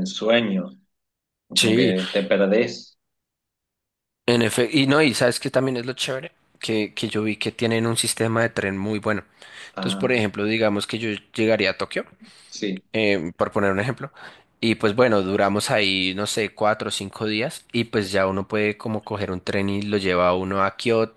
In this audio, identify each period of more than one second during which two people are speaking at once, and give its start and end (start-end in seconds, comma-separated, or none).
none